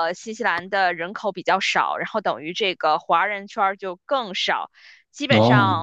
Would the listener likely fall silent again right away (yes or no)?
yes